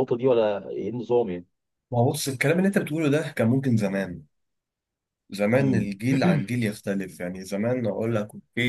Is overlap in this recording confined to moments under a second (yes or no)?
yes